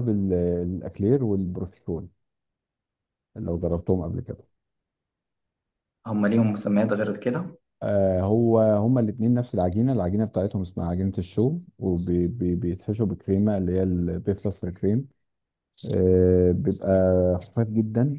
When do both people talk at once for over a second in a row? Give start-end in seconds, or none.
none